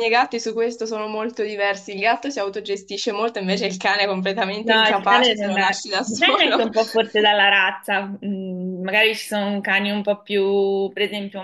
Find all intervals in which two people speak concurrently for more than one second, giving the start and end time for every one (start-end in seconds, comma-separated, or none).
4.6-6.7